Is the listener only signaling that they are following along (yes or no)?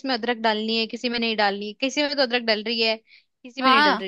no